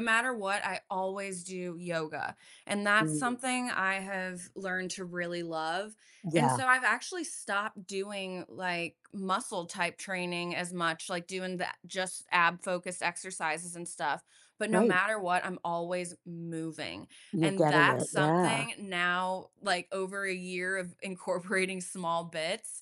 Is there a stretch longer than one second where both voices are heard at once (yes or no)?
yes